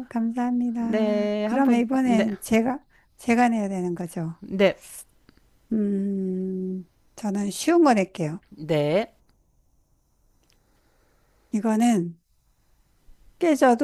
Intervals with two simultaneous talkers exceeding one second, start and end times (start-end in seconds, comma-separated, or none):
0.8-2.3